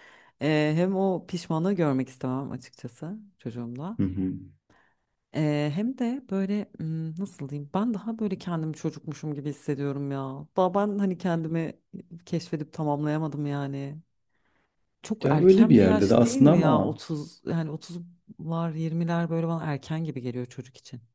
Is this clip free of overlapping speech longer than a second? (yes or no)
no